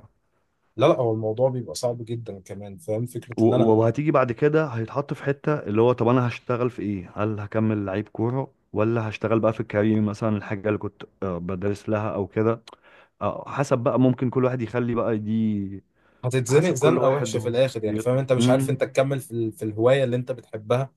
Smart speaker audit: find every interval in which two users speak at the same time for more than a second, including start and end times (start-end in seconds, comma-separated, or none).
16.5-18.8